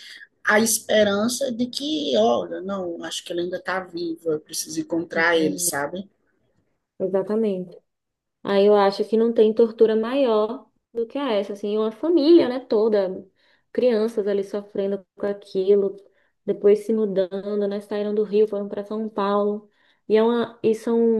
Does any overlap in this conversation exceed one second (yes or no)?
no